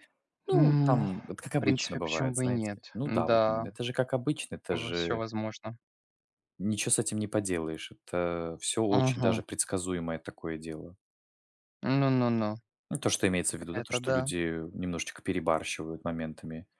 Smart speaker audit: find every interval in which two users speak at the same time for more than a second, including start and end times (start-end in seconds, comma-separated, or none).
0.5-3.7